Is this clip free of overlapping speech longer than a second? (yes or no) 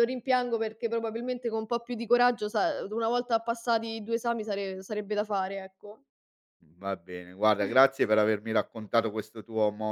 yes